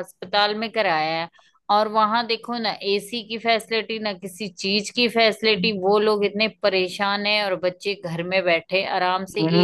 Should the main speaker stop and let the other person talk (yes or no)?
yes